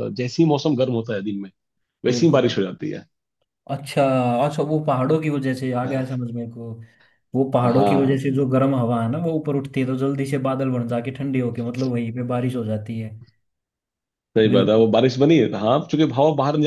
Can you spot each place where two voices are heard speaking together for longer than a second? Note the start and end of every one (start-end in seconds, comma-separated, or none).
none